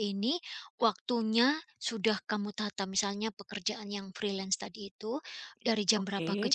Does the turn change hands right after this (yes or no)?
no